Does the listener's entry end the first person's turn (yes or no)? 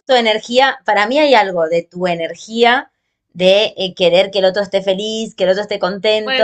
no